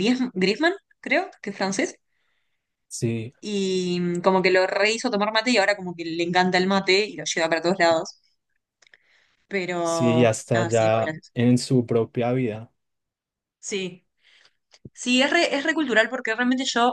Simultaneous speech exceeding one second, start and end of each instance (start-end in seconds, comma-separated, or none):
9.8-11.3